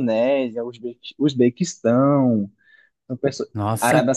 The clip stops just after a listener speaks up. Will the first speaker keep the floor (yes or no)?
yes